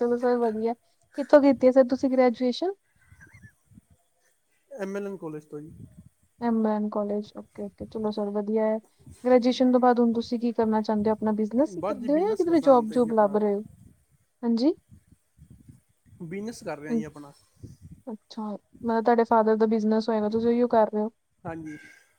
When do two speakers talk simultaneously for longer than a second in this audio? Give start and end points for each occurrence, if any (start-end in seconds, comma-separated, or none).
11.8-13.4